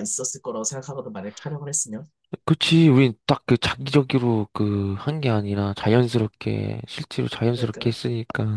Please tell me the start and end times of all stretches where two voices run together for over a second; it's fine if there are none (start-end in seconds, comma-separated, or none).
none